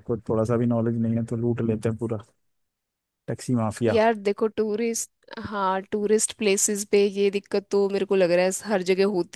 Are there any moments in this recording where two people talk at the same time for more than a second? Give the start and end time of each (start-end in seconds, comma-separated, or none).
none